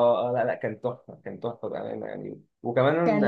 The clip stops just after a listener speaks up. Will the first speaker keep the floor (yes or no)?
yes